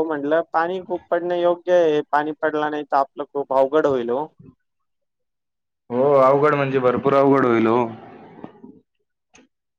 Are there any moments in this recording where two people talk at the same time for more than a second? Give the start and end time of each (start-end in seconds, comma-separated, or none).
none